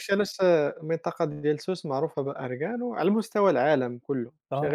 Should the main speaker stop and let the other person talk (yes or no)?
yes